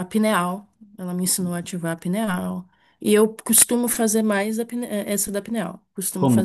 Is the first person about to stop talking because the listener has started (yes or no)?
yes